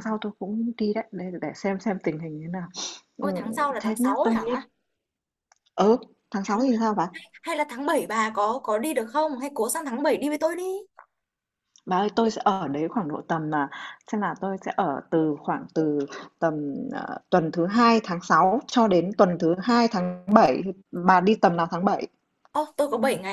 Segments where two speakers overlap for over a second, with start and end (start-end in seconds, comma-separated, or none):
3.2-4.6